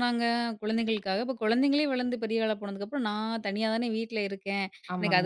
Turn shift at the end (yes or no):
no